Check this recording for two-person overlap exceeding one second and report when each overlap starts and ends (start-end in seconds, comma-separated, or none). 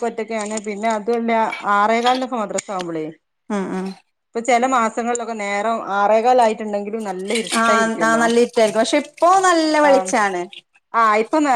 none